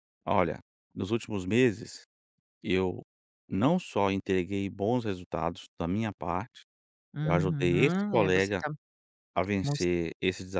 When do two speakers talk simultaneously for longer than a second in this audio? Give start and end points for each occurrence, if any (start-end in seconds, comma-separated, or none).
7.2-8.6